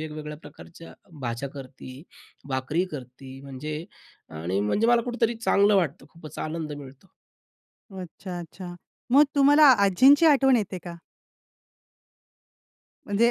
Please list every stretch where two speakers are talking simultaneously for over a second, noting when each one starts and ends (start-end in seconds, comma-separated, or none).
none